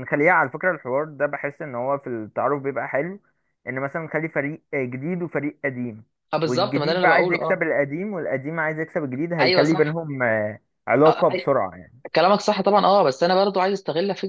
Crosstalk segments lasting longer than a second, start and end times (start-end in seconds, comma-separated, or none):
6.5-7.7